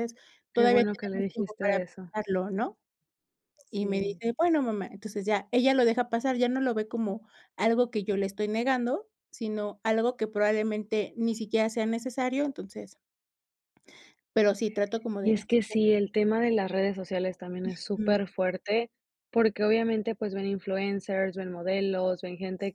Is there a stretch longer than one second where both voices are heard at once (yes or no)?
yes